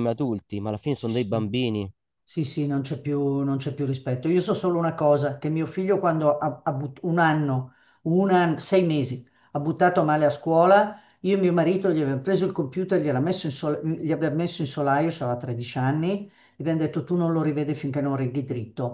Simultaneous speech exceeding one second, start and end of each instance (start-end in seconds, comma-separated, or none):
none